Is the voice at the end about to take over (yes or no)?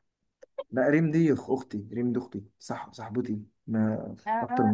yes